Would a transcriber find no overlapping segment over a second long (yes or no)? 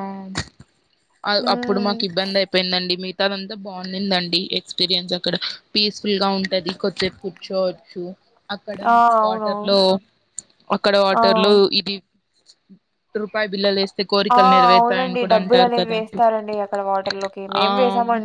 no